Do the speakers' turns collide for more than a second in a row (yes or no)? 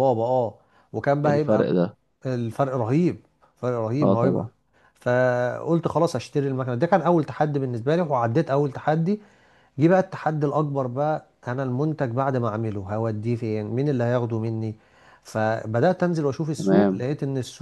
no